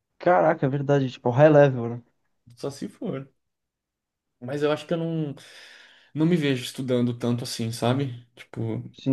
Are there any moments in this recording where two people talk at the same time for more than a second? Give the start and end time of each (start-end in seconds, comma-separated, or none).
none